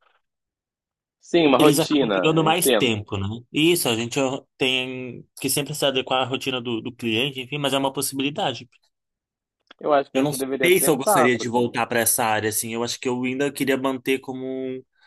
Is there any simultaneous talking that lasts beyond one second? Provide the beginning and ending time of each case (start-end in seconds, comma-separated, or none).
1.6-3.0, 10.1-11.6